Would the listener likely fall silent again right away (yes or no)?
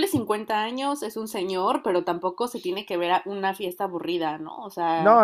no